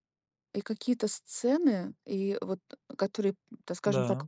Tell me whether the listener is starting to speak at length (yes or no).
no